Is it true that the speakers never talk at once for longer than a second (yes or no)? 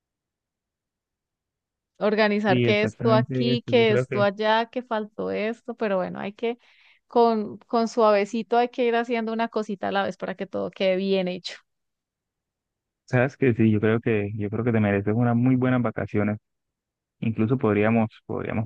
no